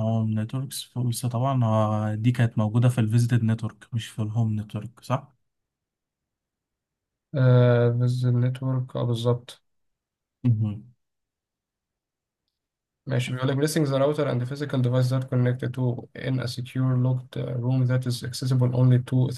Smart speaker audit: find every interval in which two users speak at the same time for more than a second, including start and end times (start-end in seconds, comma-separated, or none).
none